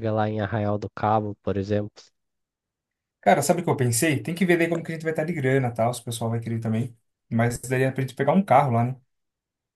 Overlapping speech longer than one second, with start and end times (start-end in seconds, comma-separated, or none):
none